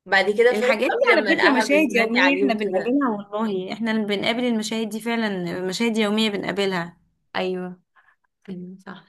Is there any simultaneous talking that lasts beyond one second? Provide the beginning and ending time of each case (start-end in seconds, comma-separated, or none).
0.5-3.0